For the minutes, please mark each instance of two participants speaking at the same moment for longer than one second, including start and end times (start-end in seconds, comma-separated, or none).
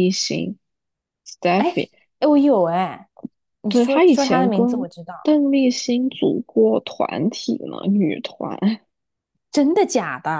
3.7-4.9